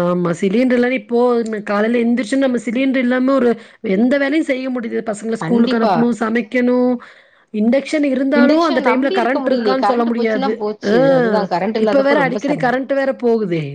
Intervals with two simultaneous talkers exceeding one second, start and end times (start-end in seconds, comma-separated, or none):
8.4-10.5